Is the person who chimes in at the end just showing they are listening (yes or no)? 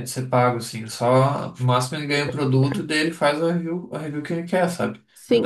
no